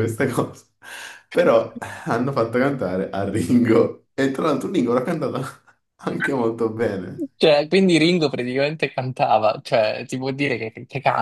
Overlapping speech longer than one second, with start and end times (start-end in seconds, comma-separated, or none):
none